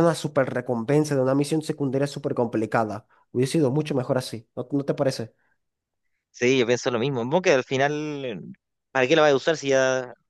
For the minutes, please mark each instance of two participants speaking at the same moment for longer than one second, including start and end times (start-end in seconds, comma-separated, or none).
none